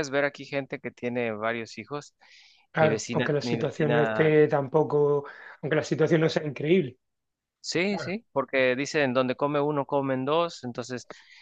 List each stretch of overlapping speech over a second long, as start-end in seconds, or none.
2.8-4.3